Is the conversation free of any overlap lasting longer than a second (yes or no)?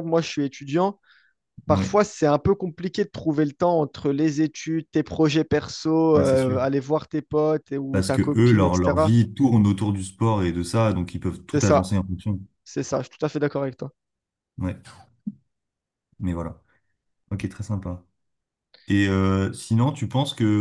no